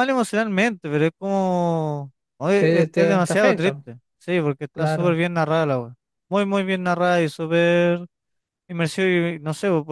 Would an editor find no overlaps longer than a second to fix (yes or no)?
no